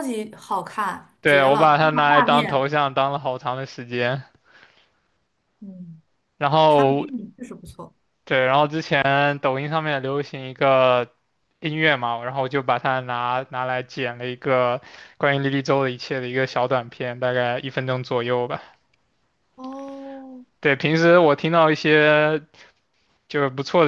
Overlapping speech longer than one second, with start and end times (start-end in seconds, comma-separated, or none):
1.2-2.7